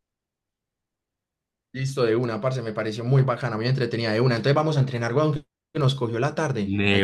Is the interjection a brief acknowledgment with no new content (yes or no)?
no